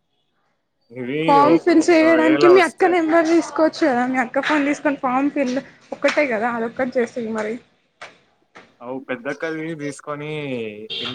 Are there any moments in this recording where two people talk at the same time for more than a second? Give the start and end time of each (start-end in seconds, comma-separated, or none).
1.3-2.9